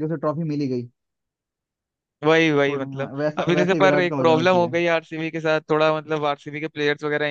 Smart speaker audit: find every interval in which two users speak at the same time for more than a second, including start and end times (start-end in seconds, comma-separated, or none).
2.7-4.7